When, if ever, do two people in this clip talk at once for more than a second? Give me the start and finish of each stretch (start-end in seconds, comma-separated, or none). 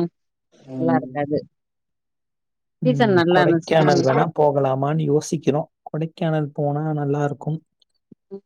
2.9-4.2